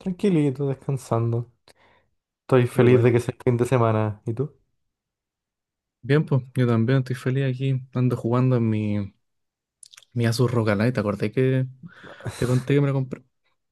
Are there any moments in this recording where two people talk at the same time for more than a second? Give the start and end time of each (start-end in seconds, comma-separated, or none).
none